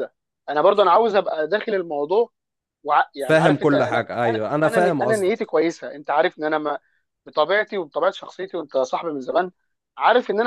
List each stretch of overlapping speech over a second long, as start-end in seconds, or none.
3.3-5.5